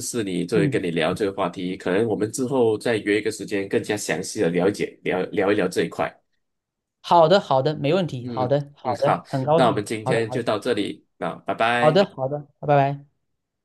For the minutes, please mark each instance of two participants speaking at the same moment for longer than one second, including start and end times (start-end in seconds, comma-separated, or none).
8.2-10.4